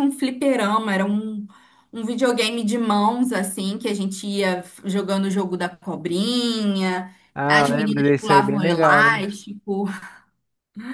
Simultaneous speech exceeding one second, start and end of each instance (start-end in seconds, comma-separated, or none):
7.3-9.1